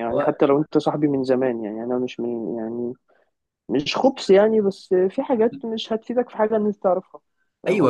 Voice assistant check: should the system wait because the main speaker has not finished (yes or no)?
no